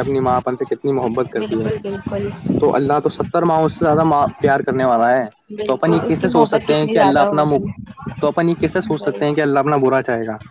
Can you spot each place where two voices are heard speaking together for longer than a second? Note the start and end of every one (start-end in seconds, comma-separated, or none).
5.7-7.4